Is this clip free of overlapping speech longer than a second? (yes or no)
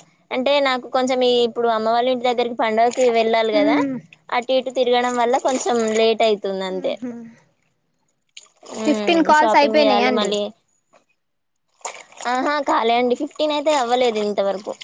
no